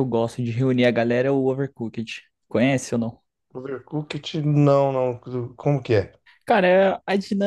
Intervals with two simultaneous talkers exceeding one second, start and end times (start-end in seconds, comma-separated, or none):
none